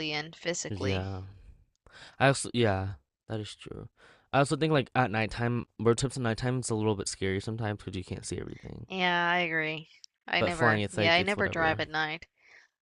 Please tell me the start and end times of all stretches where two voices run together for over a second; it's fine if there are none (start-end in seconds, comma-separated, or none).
10.4-11.8